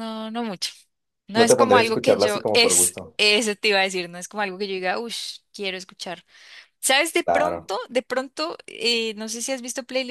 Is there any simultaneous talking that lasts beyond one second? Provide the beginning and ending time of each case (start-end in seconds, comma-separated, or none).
1.4-3.2